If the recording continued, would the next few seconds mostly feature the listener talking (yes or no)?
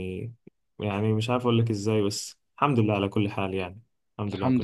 yes